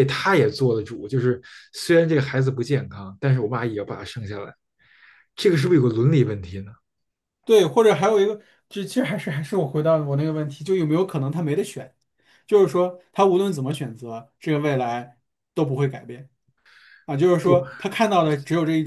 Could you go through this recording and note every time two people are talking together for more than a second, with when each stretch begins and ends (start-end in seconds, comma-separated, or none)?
none